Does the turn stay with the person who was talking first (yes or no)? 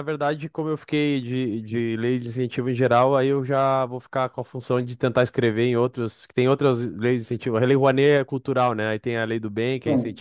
yes